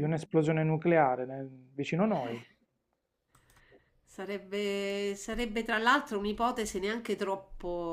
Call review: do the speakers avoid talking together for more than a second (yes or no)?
yes